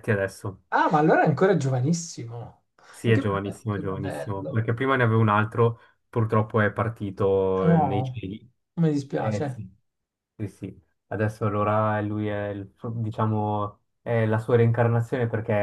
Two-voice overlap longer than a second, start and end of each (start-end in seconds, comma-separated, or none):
3.0-4.6